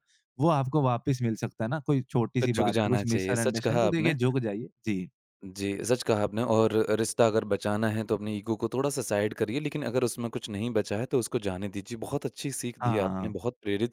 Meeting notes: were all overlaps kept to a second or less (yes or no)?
no